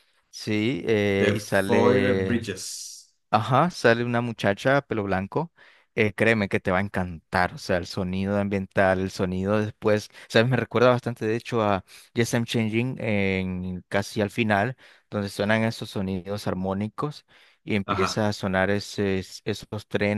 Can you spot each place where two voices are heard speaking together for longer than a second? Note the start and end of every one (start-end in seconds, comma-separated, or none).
1.2-2.5